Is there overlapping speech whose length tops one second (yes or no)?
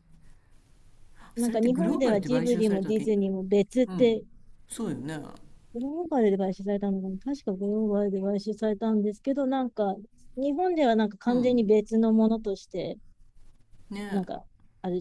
yes